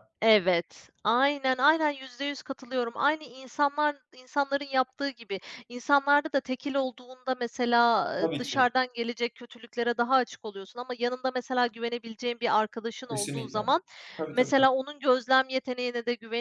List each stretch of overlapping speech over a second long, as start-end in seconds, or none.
none